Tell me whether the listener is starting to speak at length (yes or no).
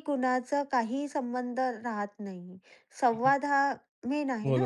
no